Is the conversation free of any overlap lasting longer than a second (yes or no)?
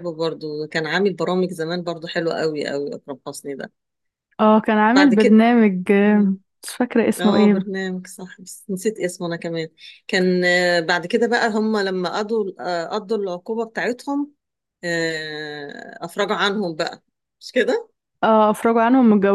yes